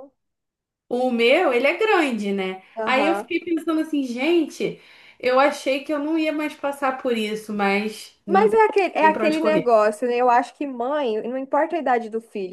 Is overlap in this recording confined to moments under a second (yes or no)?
no